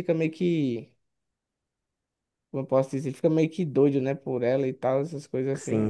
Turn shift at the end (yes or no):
yes